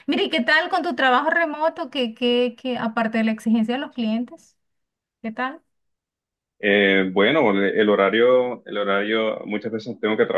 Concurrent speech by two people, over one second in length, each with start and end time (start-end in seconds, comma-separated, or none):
none